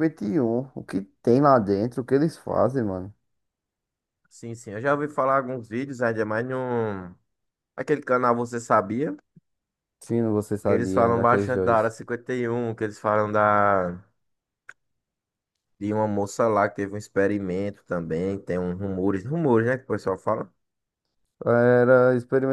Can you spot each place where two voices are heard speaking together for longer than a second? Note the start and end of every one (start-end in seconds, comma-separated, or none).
10.6-11.9